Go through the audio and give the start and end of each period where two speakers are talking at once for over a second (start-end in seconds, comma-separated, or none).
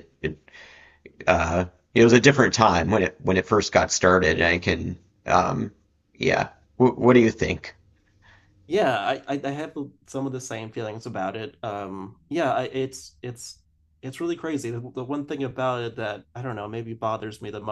none